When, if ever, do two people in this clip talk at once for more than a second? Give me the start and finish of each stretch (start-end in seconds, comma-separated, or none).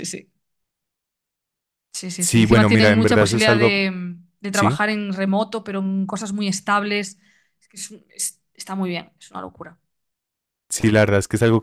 2.2-3.7